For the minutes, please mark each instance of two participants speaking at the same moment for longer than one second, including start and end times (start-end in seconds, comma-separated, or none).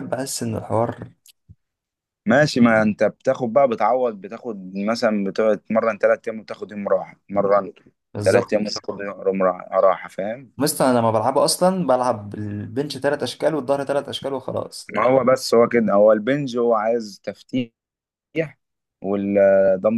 none